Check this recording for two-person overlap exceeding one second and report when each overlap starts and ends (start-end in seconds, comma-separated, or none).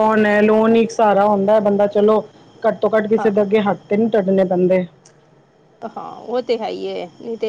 none